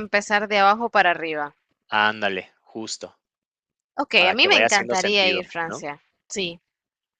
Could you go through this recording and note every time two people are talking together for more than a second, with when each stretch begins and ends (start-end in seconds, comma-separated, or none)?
4.2-5.8